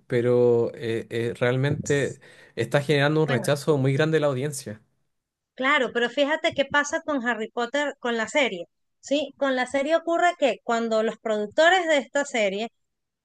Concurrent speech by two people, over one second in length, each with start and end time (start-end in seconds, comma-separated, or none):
none